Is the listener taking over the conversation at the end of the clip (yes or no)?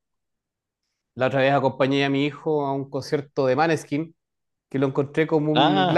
no